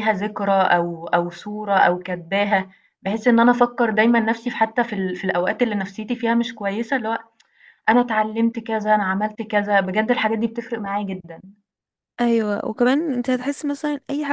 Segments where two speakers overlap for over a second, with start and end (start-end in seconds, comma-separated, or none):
none